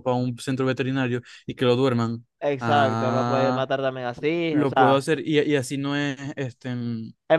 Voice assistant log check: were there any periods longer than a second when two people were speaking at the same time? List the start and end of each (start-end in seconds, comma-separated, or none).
2.4-3.6